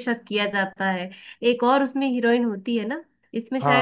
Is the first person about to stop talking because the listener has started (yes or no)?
yes